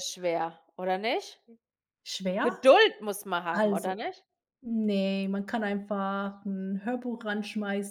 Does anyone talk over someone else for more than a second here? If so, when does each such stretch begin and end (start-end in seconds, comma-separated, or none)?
none